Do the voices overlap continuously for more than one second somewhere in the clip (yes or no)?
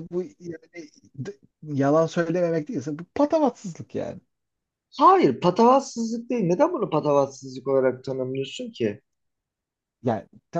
no